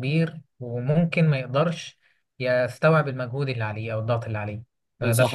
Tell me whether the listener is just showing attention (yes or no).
no